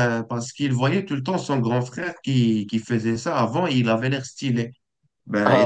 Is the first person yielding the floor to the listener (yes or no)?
no